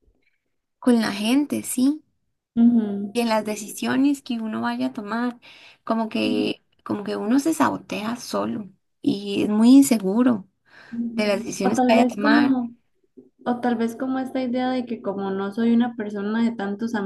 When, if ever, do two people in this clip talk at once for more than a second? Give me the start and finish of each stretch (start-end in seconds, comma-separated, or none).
11.1-12.6